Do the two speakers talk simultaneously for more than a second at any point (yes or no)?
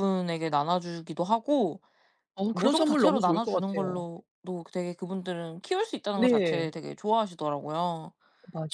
yes